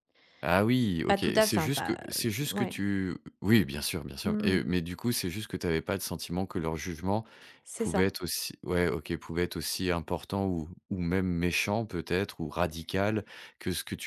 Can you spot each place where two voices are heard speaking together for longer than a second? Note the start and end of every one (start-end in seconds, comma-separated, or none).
1.1-2.8